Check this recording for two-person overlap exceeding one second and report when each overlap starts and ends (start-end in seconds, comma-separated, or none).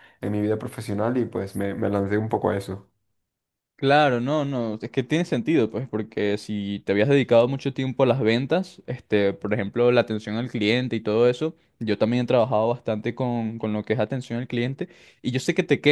none